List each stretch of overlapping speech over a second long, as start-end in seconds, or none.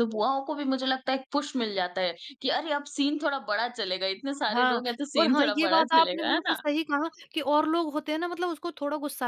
4.5-6.6